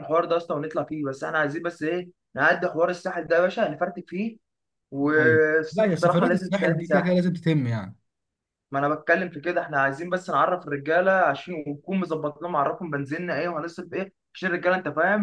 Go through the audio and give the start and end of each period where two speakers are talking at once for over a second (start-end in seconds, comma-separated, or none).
5.2-7.2